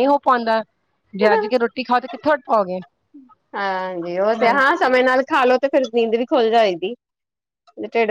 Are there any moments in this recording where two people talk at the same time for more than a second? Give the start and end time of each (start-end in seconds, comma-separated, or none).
none